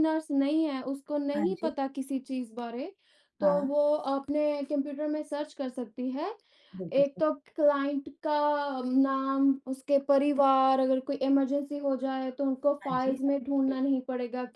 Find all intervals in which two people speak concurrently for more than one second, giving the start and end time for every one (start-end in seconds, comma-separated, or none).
none